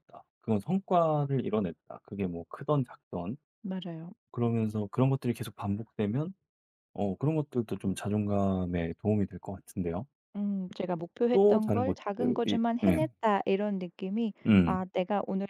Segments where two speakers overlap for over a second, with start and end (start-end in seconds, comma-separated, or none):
11.3-13.1